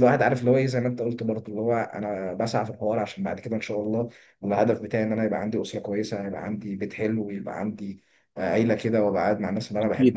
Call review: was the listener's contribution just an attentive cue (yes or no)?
yes